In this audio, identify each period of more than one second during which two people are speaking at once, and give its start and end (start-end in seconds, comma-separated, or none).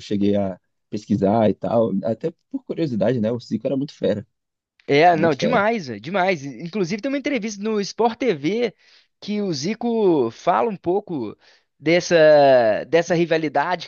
none